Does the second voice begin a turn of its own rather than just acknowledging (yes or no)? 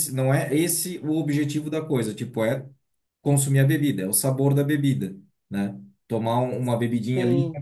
no